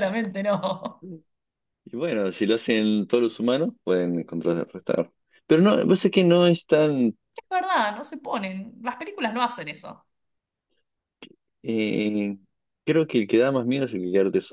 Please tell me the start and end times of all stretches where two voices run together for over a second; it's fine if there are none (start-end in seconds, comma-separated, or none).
none